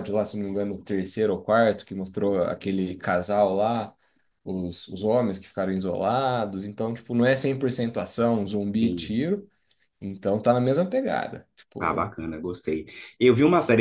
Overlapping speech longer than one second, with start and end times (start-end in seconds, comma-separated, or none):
none